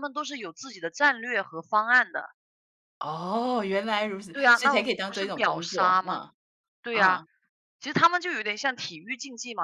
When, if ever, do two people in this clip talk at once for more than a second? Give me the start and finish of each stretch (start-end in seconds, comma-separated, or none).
4.3-6.2